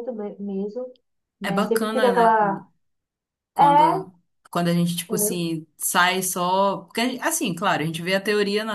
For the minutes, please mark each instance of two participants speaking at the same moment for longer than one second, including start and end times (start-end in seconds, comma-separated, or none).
1.4-2.6